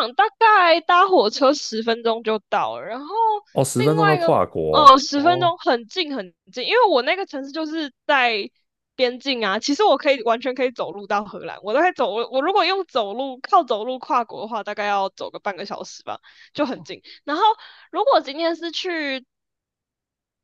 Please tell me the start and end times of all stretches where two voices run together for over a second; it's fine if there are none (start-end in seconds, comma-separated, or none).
3.8-5.5